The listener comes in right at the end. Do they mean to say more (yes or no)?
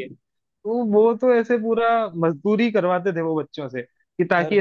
no